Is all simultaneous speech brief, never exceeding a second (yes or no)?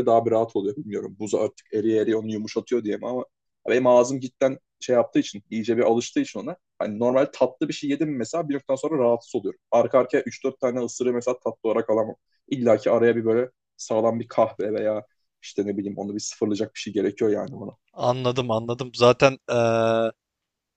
yes